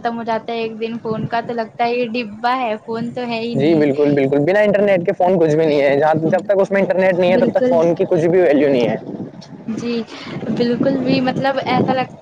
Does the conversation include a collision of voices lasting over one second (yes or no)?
no